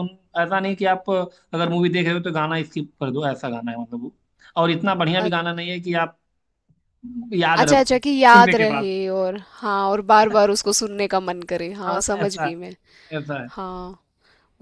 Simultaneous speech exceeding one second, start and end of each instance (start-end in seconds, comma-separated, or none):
7.6-8.9